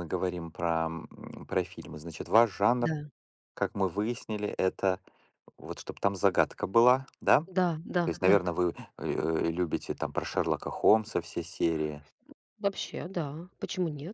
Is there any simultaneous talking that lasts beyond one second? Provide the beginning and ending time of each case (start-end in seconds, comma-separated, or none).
none